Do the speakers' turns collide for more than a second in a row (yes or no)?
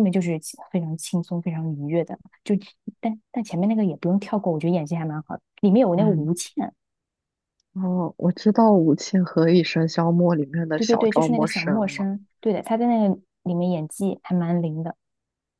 yes